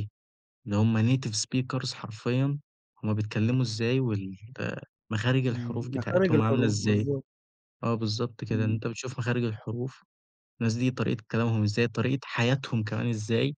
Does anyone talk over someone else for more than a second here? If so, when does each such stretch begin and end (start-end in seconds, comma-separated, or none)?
5.5-7.1